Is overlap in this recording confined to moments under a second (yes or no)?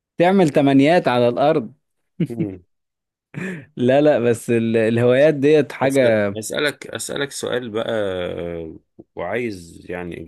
yes